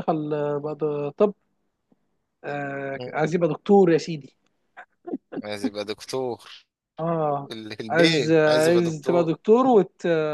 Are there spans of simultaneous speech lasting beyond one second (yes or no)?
yes